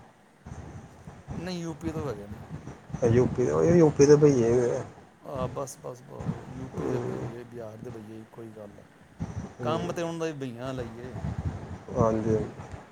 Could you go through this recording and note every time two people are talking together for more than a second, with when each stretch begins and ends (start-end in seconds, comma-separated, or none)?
none